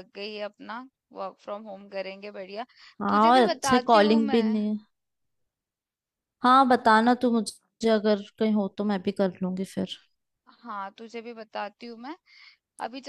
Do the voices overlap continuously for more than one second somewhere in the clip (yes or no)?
yes